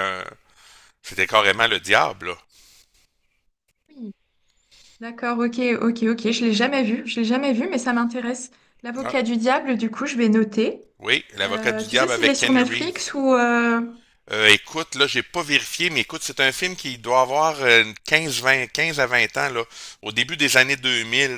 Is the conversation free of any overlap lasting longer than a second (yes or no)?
no